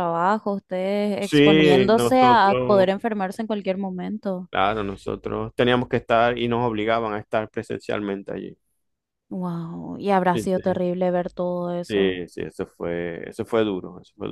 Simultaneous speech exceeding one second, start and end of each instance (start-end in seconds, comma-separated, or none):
1.2-2.4